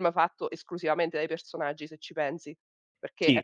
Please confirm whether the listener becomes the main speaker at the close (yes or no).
yes